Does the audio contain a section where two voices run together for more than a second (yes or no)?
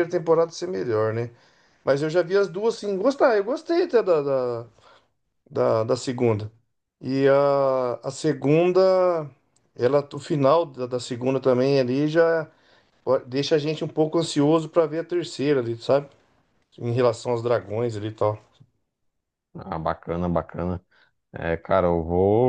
no